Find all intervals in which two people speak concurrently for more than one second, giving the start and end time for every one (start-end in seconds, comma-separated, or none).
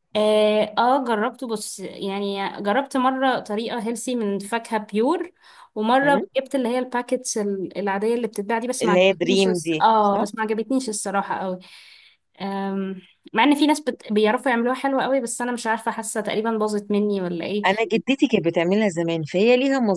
8.8-10.3